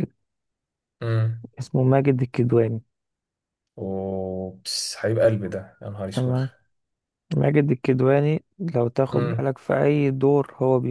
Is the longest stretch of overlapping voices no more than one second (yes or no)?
yes